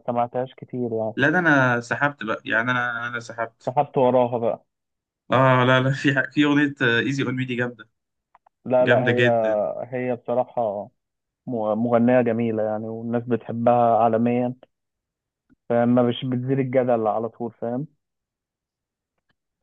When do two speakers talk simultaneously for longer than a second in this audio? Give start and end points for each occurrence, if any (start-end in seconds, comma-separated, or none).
none